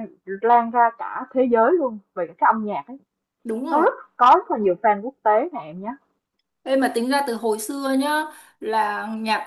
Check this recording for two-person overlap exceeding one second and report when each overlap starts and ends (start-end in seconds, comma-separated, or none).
none